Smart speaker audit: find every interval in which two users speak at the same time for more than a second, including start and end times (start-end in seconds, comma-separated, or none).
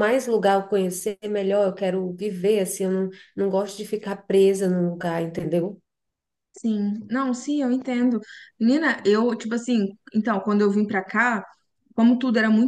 none